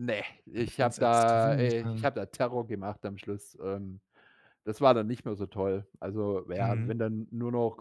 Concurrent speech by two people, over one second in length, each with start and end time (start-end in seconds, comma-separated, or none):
0.6-2.1